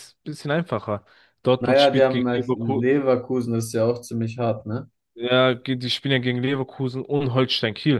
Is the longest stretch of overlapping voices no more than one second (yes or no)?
no